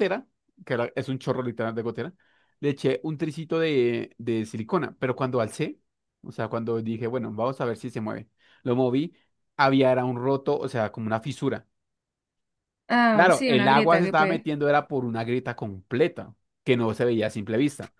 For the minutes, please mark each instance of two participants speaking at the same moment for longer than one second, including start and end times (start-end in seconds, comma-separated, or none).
13.1-14.5